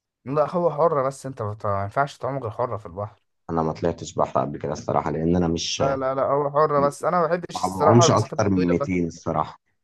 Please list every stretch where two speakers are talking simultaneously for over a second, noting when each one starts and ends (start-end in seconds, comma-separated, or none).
7.5-8.9